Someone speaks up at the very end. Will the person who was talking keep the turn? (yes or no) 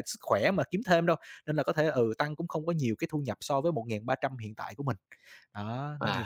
no